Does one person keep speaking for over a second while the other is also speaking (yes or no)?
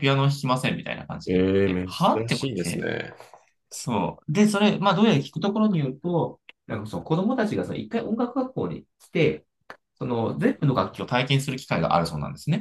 yes